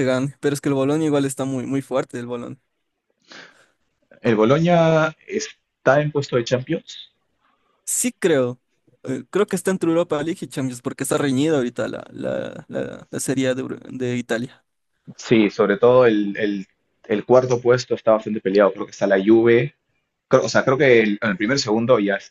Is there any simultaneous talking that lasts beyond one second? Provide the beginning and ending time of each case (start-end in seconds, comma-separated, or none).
none